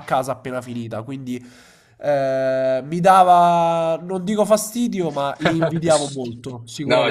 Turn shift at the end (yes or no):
yes